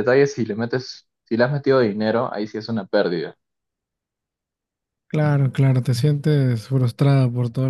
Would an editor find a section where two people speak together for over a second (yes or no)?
no